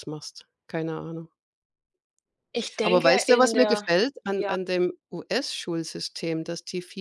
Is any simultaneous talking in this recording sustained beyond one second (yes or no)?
yes